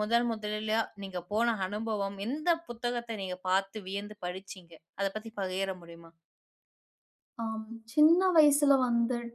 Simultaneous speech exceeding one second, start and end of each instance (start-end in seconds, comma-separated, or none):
none